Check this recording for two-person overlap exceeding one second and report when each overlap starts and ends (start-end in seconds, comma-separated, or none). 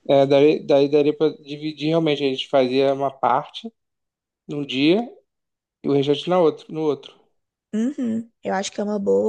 none